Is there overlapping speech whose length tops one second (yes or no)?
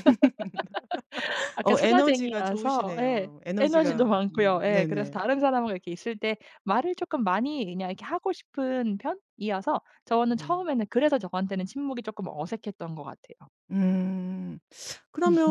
yes